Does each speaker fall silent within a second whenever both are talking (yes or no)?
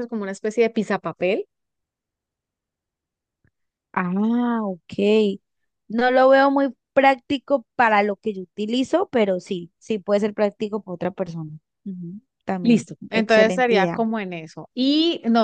no